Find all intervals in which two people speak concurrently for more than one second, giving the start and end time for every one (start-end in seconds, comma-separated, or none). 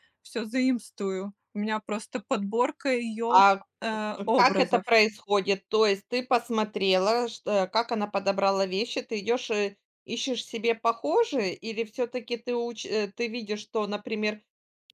none